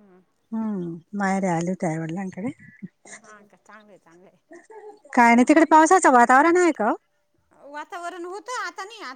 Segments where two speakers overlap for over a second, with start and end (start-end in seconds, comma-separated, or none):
none